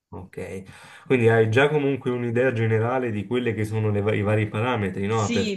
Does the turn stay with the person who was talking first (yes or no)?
no